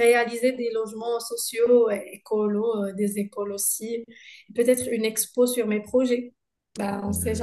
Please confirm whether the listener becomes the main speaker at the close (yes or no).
yes